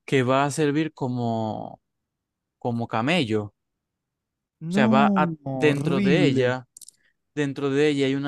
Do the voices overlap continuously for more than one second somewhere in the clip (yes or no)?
yes